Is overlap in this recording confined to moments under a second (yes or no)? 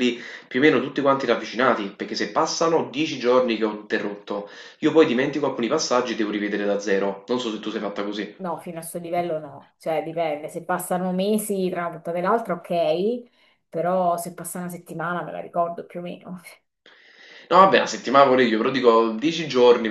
yes